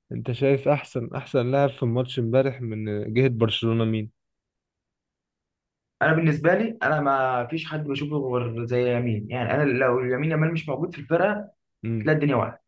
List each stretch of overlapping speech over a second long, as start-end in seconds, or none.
none